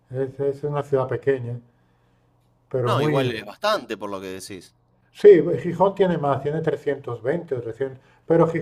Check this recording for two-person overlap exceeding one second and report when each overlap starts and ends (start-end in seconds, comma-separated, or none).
none